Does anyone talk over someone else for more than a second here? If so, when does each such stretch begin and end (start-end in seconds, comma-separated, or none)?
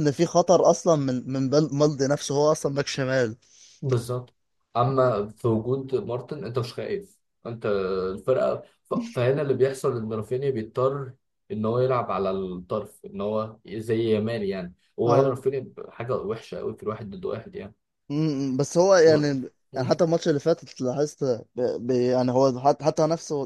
none